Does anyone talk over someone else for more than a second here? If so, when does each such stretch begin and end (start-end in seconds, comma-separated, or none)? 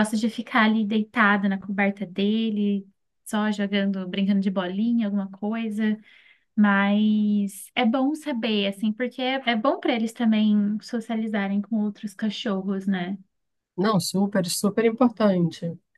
none